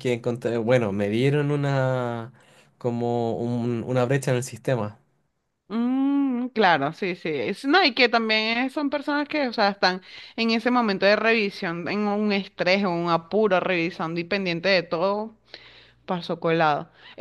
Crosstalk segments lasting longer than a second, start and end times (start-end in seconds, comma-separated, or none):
none